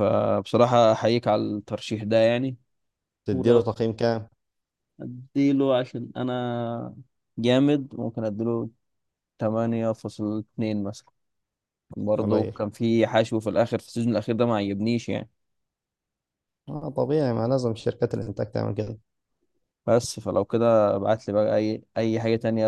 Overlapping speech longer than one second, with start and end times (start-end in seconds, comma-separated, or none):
none